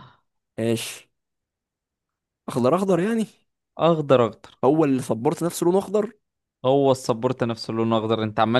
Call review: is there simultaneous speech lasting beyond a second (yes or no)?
no